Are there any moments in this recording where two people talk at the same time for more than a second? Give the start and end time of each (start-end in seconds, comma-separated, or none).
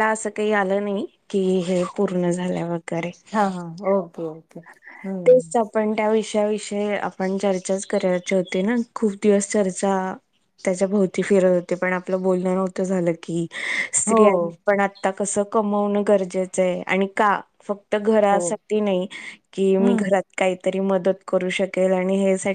none